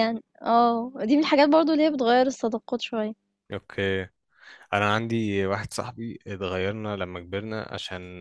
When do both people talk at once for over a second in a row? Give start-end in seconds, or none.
none